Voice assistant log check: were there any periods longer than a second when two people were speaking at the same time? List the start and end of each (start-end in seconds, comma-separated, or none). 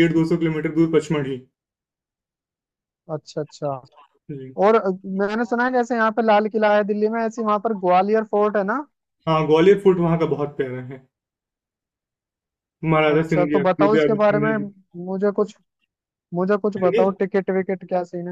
13.1-14.6